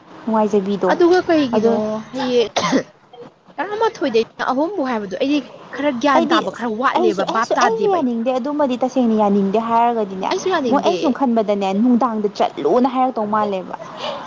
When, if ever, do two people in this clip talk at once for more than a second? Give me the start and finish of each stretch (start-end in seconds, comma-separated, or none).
none